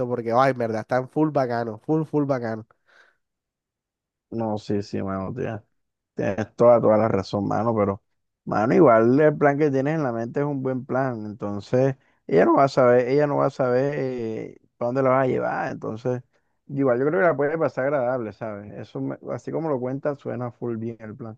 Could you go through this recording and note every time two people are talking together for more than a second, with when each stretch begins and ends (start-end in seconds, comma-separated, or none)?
none